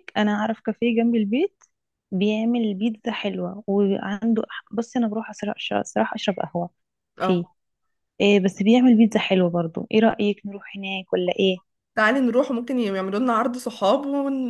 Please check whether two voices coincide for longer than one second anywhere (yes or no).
no